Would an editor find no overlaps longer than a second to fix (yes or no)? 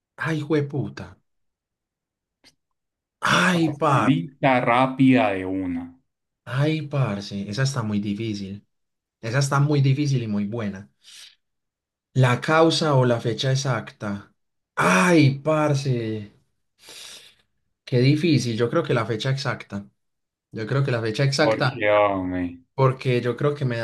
yes